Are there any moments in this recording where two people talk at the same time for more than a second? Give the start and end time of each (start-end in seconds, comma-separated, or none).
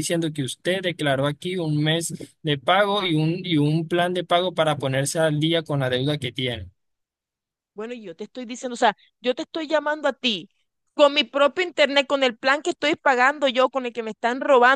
none